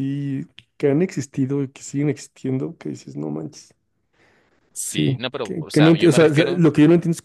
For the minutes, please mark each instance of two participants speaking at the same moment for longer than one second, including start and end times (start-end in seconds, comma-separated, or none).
4.8-6.7